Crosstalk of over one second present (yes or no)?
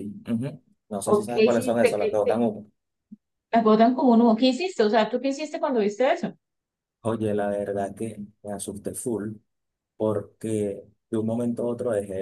yes